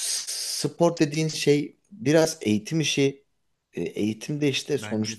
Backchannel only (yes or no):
yes